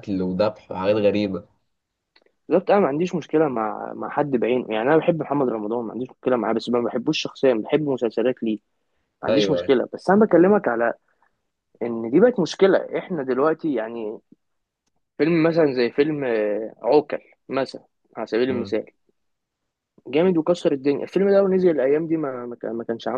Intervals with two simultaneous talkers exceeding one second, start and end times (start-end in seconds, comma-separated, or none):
none